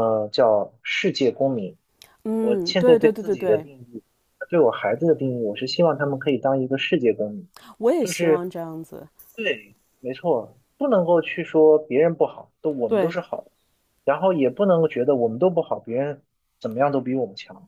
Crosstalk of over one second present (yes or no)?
yes